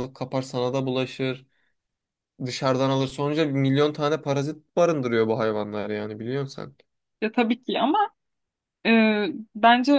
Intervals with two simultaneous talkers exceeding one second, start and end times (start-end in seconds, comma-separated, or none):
none